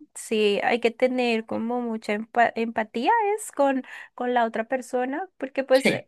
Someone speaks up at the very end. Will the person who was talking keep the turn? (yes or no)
yes